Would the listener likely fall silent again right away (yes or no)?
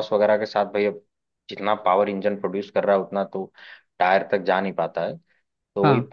yes